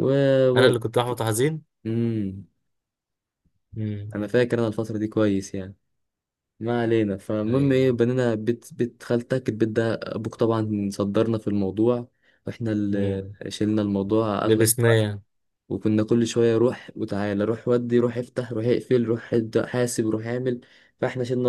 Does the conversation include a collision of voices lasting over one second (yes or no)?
no